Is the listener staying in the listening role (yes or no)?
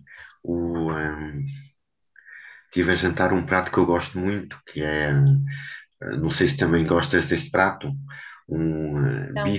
yes